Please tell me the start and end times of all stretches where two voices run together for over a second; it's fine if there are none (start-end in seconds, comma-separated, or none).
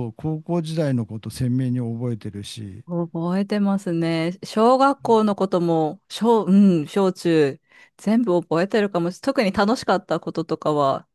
none